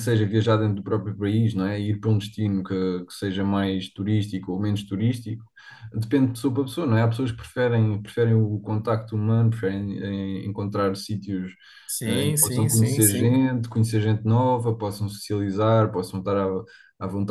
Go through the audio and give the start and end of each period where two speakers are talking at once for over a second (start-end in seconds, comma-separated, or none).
12.1-13.4